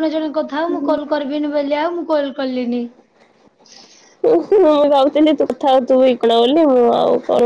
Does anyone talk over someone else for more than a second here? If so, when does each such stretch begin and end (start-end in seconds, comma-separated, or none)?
none